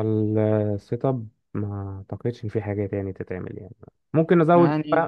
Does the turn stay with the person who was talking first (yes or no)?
yes